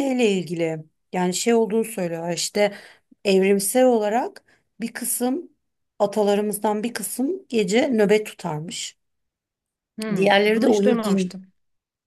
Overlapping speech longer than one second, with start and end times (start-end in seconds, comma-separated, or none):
10.1-11.4